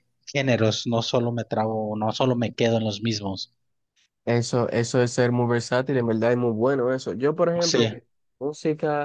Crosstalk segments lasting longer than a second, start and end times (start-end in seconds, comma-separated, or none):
none